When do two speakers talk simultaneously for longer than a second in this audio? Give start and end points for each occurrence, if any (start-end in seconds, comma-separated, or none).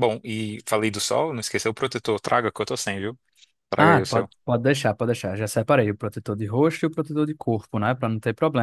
none